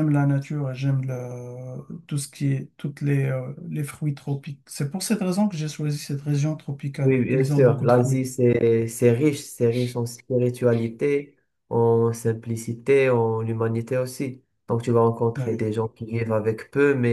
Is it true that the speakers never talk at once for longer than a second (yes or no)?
no